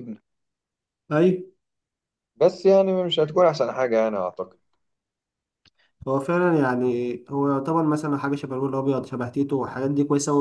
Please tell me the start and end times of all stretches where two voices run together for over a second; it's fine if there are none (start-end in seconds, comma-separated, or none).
none